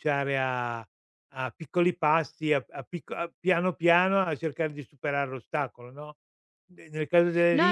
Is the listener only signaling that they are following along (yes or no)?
no